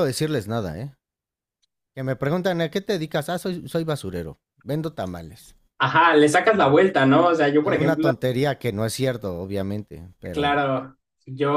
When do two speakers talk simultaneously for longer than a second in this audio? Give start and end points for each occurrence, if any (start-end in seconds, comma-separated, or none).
none